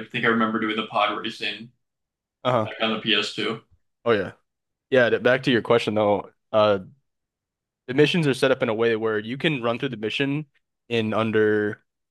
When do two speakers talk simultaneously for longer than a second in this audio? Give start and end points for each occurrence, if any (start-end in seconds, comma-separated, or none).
none